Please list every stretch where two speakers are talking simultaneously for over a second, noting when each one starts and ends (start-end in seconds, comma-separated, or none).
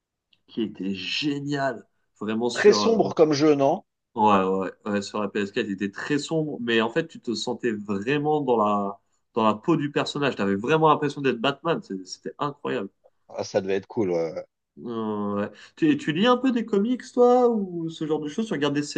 none